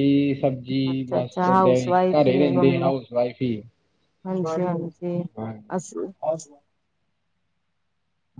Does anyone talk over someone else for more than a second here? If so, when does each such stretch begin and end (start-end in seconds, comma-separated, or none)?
0.9-2.9